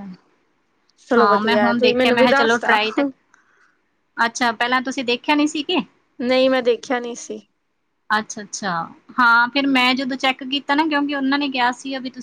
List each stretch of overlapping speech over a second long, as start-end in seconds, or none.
1.2-2.8